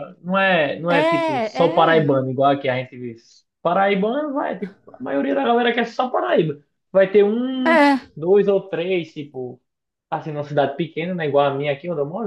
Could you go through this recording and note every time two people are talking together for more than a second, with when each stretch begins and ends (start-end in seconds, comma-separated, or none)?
0.9-2.1